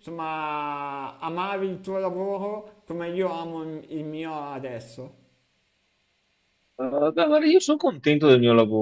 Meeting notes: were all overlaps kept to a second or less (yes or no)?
yes